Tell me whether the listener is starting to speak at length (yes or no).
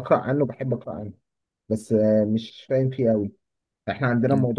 no